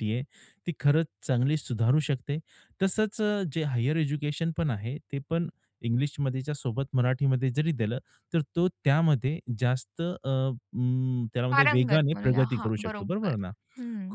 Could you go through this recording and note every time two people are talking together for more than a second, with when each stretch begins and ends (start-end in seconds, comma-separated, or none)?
11.5-13.3